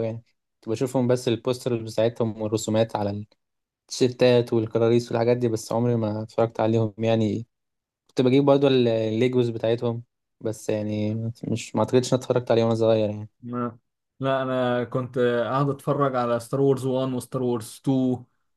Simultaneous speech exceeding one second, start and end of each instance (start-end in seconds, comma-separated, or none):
none